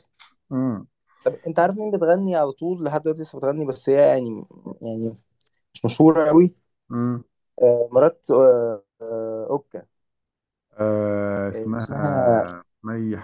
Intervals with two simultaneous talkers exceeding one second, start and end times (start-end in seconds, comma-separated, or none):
none